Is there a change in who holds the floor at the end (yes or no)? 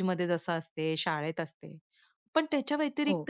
no